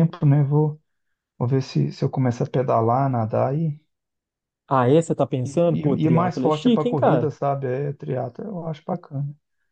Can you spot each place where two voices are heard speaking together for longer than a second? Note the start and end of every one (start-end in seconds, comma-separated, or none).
5.4-7.3